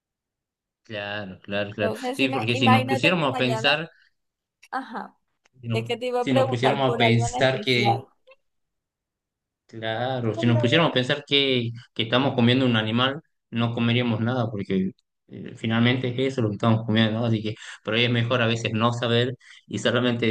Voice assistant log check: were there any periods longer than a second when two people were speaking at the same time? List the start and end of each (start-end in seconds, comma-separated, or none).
1.8-3.8, 5.7-8.0